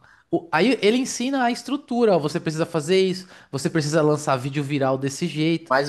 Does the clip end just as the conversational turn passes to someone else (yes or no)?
yes